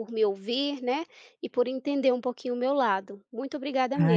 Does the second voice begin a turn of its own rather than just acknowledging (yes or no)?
yes